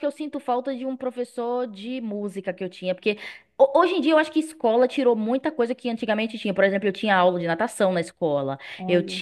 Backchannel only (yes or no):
yes